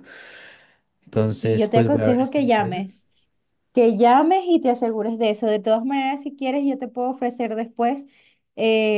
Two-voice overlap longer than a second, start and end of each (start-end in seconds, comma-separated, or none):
1.4-2.9